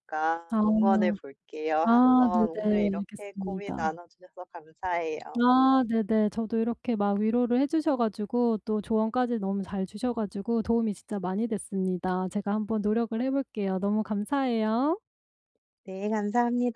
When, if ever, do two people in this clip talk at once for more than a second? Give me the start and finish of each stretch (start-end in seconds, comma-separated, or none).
1.8-3.9